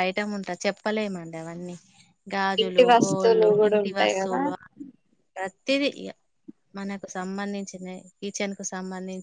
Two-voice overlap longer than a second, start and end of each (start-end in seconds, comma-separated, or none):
2.6-4.4